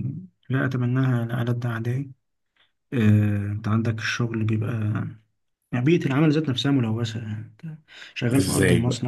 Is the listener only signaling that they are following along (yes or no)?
yes